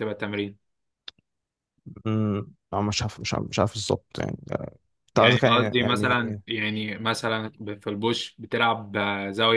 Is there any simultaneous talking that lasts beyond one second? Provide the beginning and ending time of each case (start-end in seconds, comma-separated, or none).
5.1-6.4